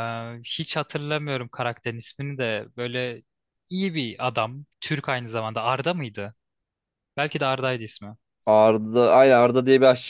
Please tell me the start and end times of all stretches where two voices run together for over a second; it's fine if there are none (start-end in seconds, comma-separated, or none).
none